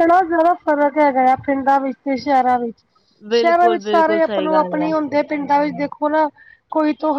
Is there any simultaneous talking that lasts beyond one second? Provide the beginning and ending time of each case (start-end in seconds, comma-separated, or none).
3.4-4.9